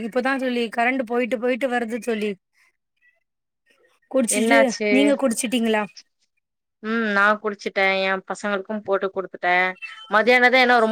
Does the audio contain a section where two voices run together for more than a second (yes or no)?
no